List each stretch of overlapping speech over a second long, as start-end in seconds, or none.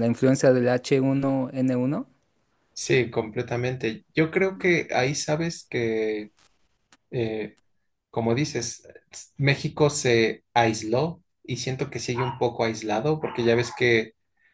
none